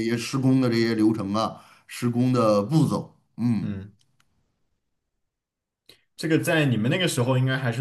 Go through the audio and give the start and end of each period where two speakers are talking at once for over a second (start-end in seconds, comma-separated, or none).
none